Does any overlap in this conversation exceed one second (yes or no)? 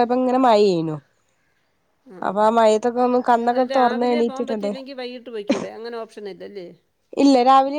yes